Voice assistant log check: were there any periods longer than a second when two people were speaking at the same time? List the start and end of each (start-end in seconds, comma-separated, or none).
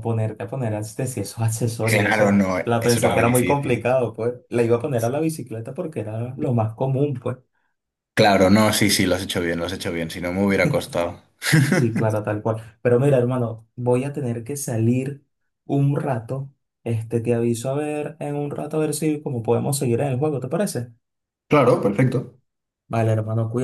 1.8-3.9